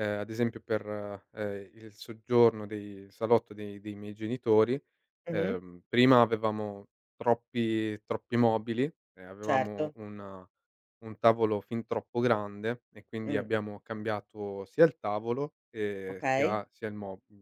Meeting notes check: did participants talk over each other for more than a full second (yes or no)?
no